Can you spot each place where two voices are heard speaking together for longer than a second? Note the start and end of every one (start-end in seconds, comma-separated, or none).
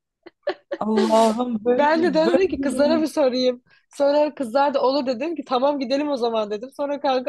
1.8-3.0